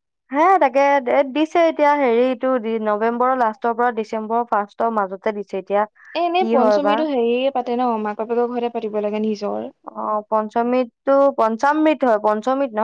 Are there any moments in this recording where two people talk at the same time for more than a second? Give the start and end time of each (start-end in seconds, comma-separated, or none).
none